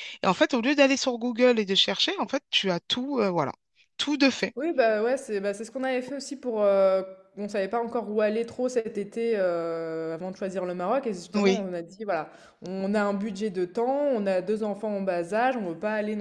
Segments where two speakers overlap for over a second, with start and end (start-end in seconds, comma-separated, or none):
none